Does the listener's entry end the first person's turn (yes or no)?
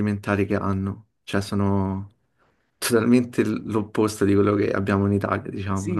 yes